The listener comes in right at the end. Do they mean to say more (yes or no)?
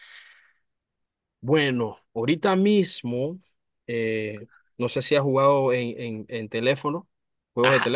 yes